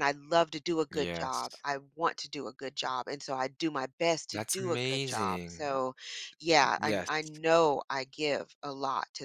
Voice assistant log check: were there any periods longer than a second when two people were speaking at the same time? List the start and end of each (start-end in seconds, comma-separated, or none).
4.3-5.8